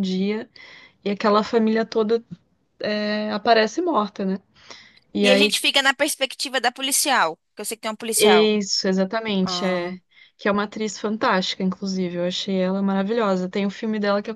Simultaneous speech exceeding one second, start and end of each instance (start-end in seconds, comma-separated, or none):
none